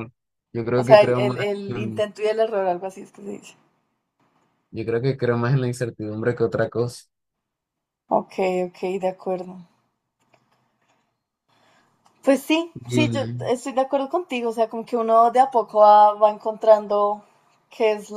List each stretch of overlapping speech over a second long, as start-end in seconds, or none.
0.7-2.1